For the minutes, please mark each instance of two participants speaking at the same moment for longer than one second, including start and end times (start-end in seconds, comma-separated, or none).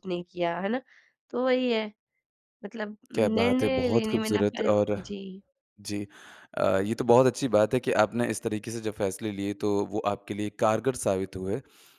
3.1-4.9